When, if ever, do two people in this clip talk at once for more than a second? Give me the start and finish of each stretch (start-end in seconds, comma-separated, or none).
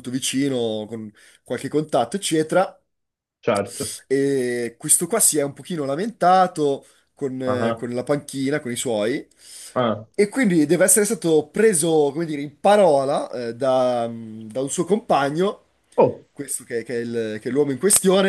none